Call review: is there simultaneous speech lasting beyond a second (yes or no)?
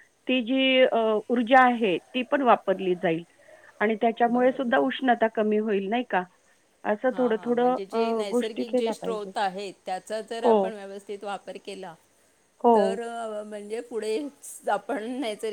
yes